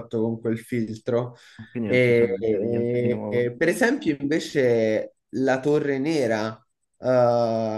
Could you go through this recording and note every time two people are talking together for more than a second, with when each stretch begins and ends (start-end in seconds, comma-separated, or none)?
1.8-3.5